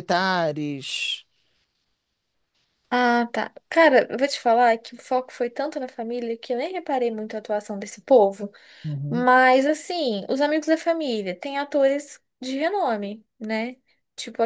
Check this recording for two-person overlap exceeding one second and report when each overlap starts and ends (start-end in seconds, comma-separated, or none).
none